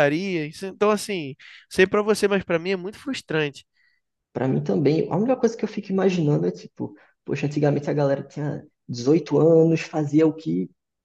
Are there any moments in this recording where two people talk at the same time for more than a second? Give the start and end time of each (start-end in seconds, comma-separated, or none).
none